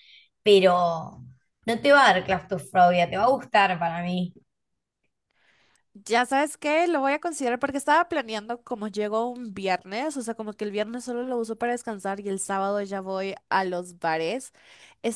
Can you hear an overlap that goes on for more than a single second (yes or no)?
no